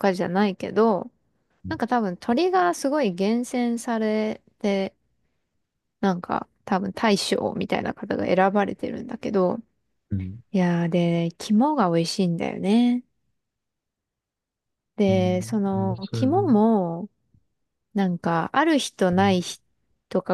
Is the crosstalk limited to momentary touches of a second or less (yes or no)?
no